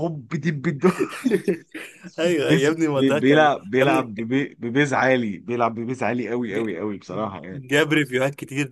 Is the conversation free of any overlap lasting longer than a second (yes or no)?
no